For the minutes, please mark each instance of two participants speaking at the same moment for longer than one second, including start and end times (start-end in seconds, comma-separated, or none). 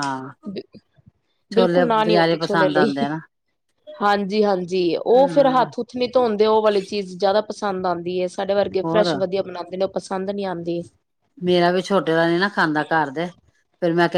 1.5-2.9